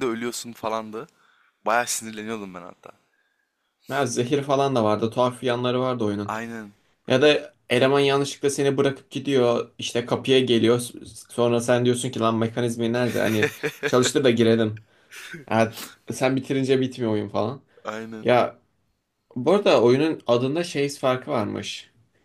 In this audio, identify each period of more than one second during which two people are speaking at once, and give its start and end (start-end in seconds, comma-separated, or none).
none